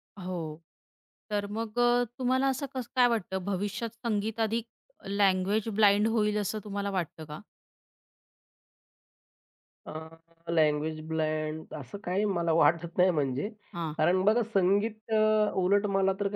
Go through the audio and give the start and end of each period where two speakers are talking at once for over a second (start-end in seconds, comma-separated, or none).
none